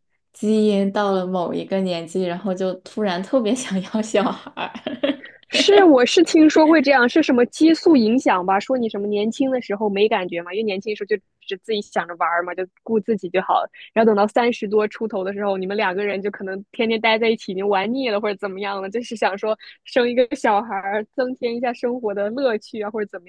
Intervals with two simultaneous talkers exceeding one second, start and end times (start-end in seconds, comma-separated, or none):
none